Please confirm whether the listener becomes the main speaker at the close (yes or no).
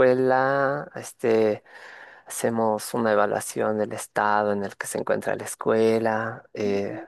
no